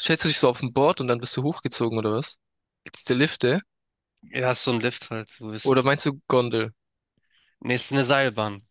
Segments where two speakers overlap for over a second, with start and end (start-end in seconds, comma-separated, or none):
none